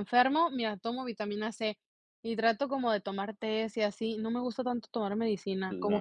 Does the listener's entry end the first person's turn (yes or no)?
no